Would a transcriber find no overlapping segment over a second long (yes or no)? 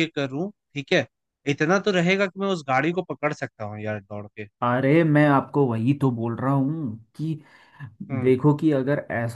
yes